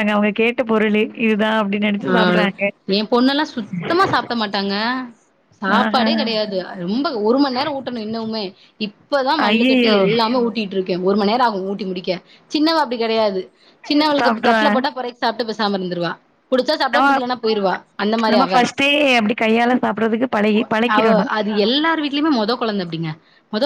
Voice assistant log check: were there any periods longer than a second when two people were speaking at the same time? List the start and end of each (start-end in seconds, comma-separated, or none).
none